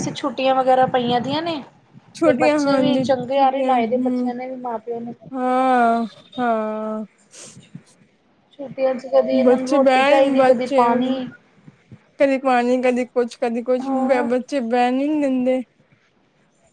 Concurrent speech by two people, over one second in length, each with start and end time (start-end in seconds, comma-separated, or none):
2.2-4.3, 9.4-11.1